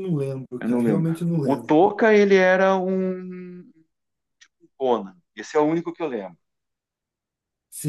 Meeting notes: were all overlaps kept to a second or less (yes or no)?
no